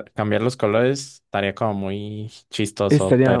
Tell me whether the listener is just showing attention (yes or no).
no